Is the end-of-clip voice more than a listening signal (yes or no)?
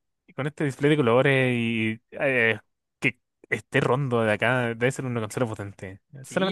yes